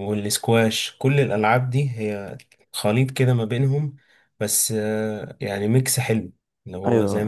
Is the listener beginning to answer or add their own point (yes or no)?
yes